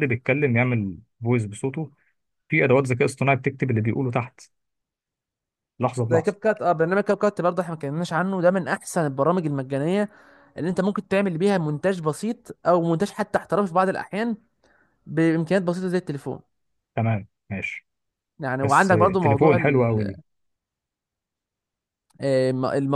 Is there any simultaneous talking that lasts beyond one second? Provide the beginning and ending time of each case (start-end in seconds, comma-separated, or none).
18.6-20.1